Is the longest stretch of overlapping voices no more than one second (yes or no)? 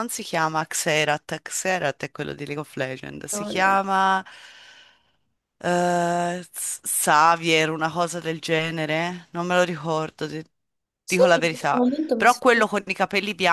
no